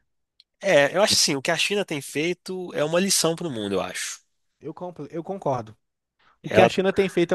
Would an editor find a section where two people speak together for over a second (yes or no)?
no